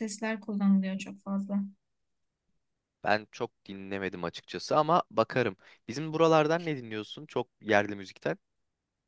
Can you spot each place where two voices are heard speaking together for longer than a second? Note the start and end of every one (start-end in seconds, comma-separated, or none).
none